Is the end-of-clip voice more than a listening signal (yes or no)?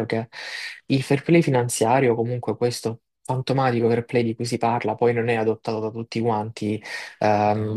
no